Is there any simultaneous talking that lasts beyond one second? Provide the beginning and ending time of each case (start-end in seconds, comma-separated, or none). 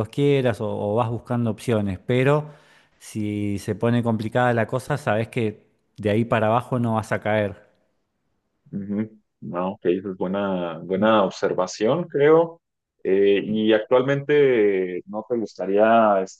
none